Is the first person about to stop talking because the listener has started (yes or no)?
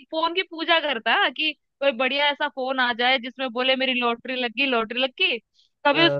no